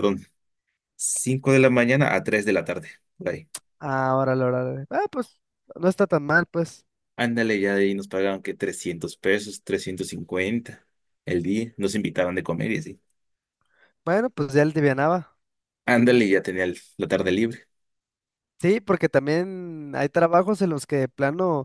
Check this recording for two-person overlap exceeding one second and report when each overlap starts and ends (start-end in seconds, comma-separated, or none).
none